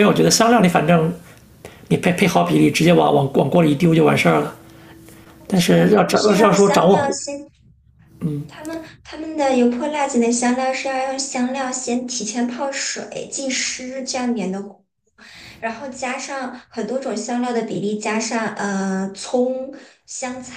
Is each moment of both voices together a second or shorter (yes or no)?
no